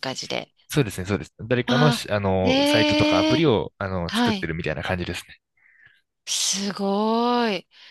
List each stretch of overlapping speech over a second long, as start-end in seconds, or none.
1.7-3.4